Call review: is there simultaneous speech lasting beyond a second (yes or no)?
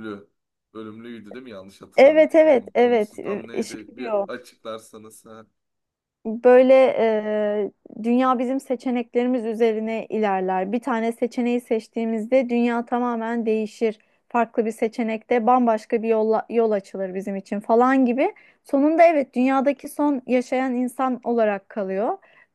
yes